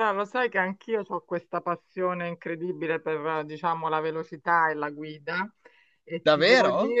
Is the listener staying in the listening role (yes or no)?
yes